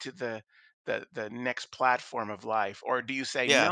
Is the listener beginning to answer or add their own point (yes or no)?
no